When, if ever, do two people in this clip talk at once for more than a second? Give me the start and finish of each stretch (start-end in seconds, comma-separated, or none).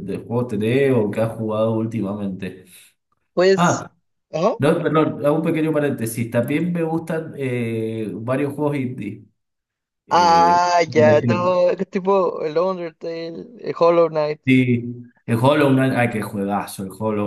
10.1-11.5